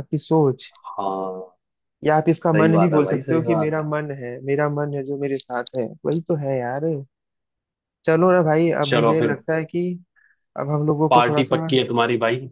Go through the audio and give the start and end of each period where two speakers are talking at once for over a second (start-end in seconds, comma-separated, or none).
2.5-3.9